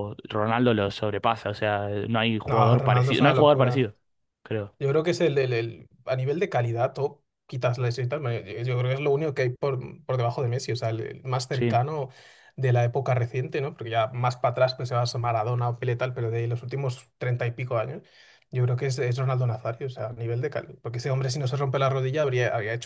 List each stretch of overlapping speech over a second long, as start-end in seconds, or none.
2.5-3.9